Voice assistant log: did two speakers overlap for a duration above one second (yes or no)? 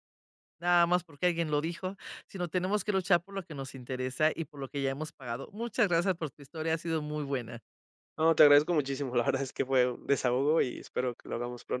no